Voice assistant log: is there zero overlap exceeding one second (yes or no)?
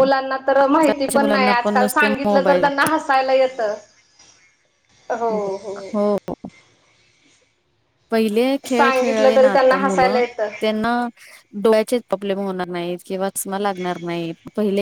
no